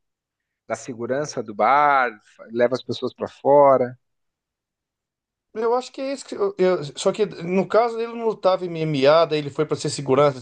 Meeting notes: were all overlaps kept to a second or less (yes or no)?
yes